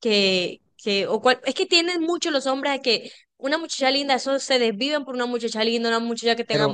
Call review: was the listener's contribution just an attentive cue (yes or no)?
no